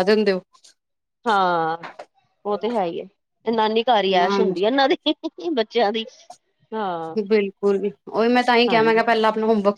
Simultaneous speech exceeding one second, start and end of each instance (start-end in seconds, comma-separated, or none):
none